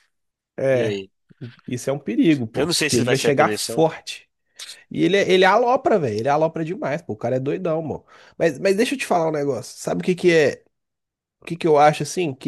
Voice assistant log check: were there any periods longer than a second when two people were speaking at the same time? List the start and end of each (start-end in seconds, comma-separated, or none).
2.6-3.9